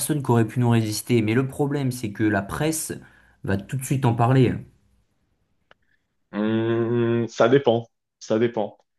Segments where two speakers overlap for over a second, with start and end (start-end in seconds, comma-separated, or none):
none